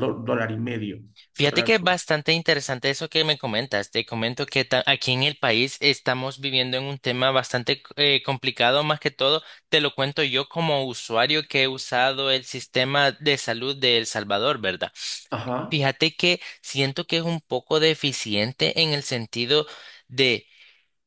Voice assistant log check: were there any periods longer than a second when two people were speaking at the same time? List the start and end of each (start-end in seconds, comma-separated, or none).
none